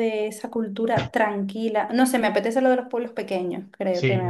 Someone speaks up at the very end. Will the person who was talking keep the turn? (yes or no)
no